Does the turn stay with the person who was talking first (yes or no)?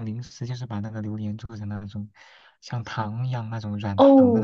no